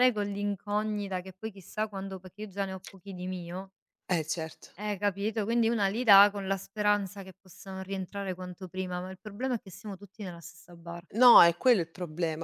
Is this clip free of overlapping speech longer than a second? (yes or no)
yes